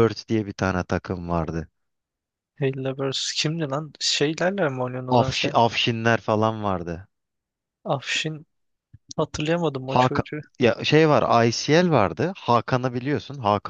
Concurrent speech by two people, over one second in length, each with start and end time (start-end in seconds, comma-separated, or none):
none